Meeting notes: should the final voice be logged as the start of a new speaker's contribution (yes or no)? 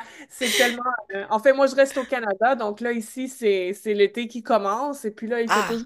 no